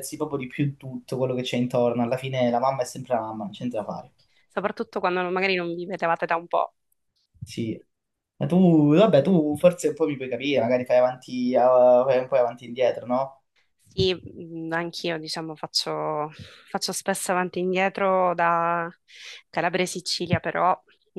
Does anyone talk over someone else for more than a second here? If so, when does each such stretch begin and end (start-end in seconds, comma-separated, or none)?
none